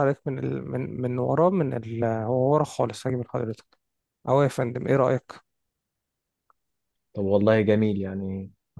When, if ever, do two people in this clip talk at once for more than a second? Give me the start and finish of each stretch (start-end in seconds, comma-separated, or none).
none